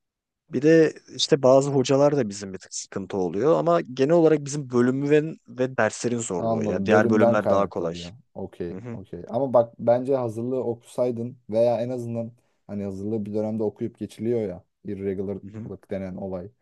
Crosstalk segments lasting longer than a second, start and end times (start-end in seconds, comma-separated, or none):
6.4-7.9